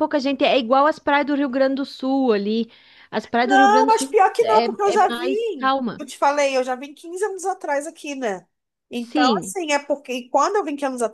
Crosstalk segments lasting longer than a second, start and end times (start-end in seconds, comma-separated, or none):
3.4-6.0